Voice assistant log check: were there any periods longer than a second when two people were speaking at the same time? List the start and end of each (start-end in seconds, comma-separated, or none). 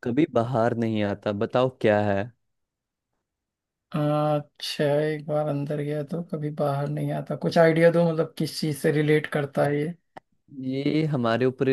none